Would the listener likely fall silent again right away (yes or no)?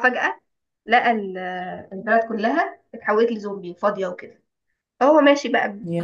yes